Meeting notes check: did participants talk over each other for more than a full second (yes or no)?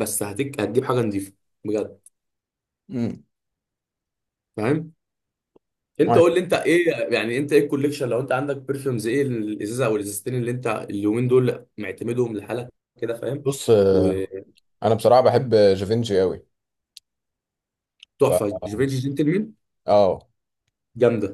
no